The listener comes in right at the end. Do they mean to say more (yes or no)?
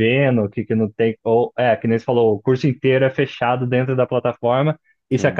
no